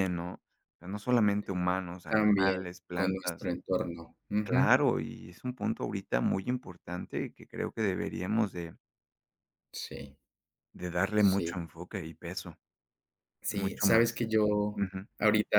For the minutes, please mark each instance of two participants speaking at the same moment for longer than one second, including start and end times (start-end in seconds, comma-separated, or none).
2.1-3.5